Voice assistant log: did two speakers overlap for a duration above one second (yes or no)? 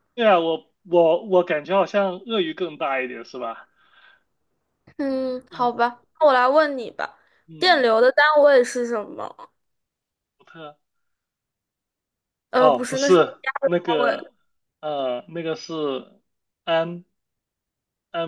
yes